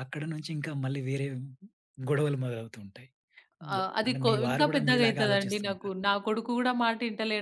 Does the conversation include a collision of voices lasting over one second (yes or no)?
yes